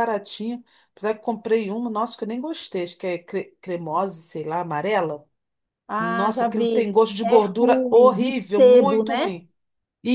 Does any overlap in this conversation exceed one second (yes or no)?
yes